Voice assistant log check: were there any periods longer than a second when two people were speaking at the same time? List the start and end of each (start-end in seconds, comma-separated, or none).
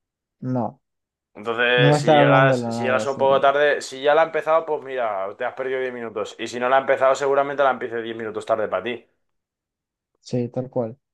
1.8-3.4